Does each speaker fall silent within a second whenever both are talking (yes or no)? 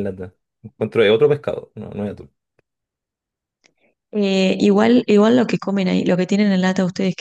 yes